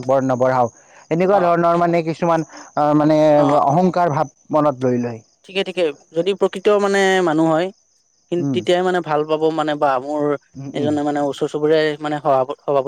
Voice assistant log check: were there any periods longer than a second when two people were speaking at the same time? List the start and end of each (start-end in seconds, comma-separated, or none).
none